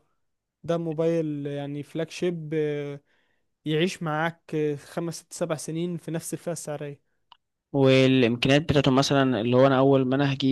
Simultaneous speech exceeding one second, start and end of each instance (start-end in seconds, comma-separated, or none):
none